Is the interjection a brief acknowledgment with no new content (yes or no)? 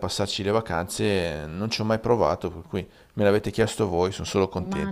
no